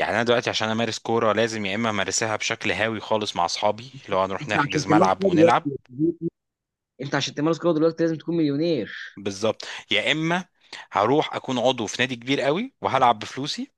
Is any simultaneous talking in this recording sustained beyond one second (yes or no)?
yes